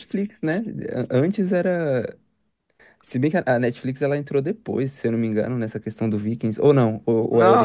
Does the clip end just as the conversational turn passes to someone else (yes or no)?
yes